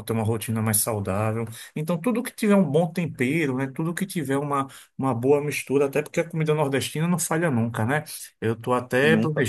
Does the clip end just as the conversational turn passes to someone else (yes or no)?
no